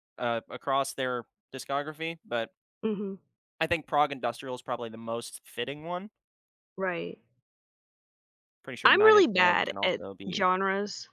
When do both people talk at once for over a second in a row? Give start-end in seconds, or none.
8.8-10.5